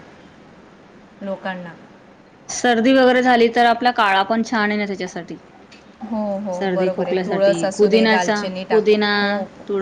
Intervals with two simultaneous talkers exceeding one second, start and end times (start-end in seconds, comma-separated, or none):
6.6-9.1